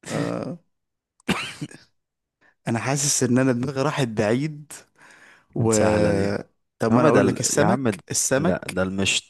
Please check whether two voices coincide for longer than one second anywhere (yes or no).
yes